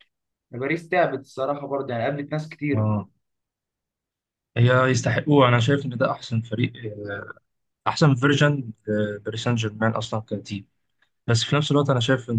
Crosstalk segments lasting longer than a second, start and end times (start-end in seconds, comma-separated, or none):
none